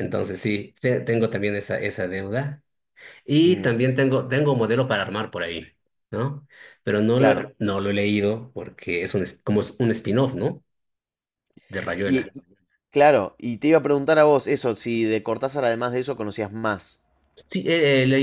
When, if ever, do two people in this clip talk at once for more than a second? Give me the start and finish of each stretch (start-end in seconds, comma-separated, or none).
none